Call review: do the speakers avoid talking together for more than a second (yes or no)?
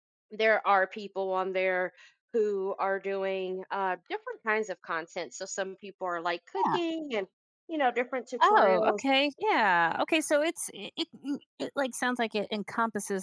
yes